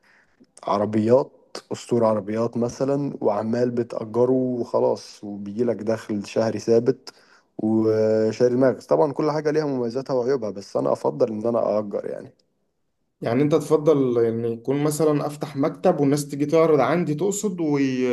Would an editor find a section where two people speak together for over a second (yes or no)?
no